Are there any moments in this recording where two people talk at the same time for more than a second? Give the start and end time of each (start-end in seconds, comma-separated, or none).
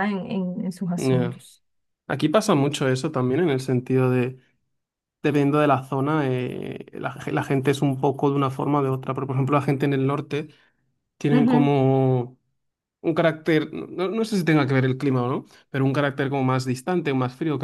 none